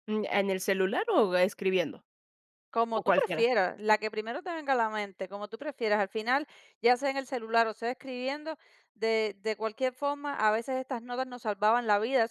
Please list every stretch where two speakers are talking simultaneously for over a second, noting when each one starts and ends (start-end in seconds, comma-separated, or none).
none